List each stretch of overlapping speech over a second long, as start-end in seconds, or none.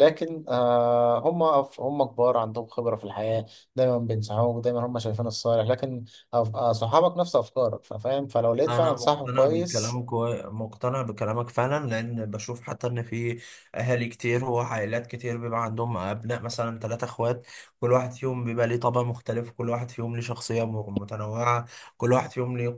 8.6-10.0